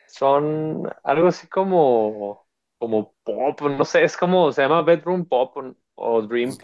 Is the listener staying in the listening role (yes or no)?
yes